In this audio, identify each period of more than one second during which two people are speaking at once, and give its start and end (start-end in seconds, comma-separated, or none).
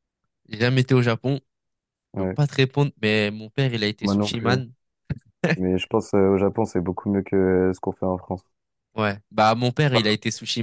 none